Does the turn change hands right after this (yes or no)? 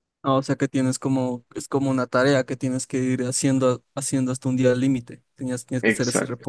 no